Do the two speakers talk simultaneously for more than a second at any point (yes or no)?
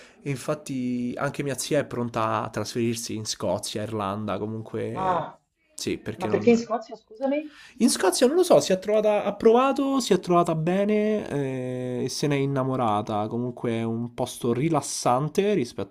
no